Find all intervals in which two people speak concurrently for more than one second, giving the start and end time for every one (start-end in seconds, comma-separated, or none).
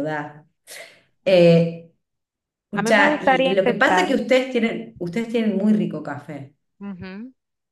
2.8-4.2